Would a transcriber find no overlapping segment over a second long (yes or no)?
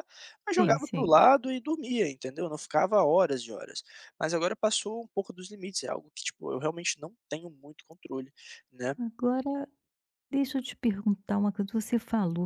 yes